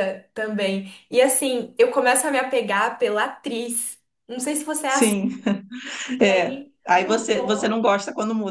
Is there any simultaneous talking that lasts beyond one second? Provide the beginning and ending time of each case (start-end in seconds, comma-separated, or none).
6.2-7.8